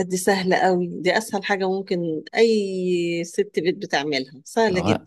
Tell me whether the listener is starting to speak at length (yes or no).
yes